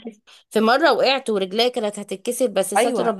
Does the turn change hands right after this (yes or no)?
yes